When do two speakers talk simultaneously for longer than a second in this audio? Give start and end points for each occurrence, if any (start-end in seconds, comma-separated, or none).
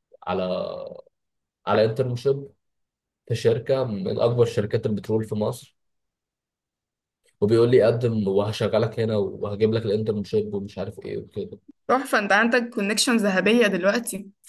none